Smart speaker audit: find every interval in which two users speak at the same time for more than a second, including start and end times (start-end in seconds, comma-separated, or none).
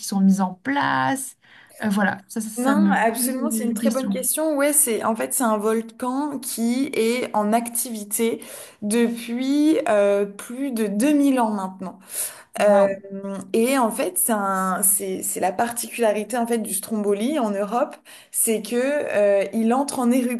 2.6-4.2